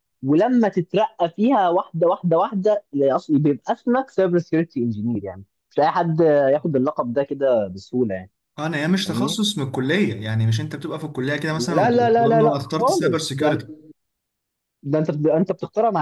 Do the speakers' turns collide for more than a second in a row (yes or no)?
yes